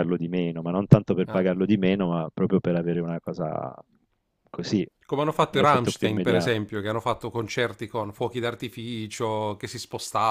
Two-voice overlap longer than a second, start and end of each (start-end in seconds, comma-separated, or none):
5.3-6.6